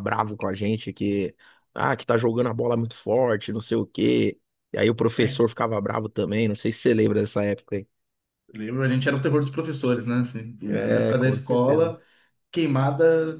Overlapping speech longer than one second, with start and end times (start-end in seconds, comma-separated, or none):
10.7-11.9